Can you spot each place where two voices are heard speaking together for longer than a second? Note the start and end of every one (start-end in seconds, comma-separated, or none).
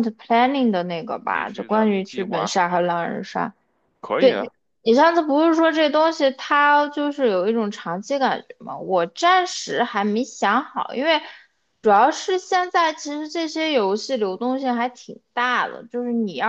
1.2-2.6